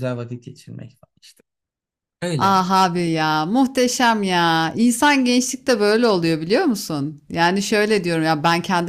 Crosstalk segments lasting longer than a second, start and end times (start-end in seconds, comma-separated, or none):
none